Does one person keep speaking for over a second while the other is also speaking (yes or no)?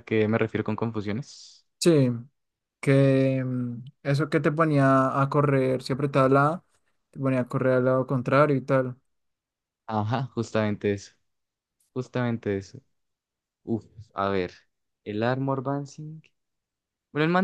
no